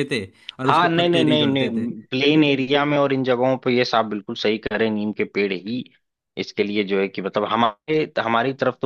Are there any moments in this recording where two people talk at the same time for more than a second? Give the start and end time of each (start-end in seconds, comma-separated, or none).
0.7-1.9